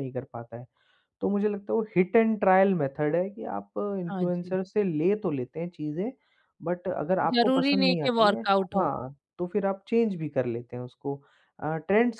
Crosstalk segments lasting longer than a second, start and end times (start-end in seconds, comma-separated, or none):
7.4-8.9